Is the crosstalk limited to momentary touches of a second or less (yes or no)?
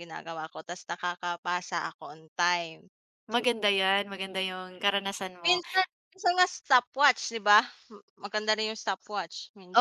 yes